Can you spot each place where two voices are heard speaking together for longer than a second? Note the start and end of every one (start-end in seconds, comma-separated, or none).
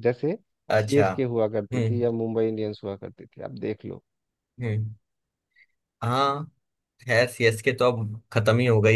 none